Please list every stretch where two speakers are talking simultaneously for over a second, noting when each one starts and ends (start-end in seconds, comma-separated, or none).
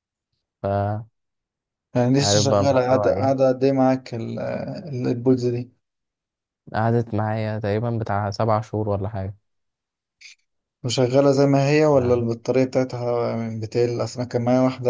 2.2-3.4